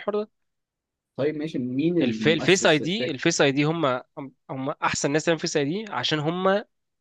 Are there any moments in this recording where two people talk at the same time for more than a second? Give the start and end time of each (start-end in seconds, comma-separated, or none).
2.0-3.2